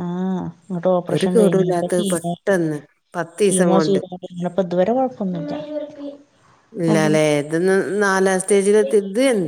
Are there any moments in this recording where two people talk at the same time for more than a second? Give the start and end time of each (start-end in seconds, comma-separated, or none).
1.1-2.5